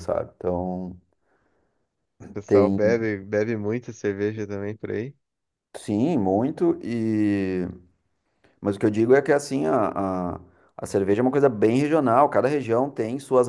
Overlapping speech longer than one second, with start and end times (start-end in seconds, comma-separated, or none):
none